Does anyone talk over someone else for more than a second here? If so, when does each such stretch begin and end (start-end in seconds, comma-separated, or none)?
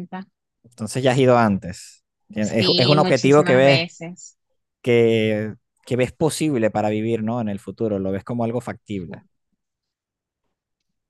2.4-3.8